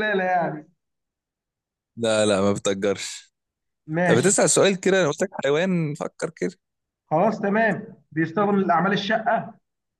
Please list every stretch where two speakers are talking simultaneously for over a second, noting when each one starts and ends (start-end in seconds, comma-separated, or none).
none